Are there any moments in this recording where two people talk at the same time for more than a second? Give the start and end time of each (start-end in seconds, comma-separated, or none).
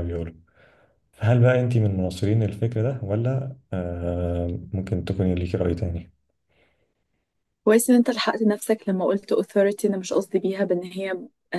none